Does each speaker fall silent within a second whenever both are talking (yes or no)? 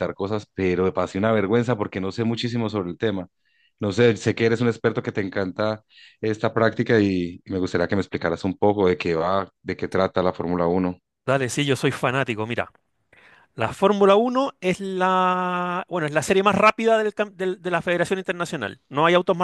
yes